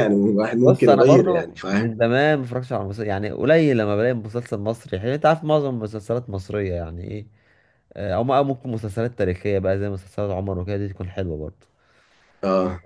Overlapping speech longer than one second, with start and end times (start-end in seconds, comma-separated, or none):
0.7-1.9